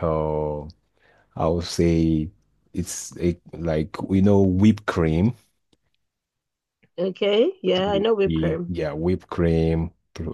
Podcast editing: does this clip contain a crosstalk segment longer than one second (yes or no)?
no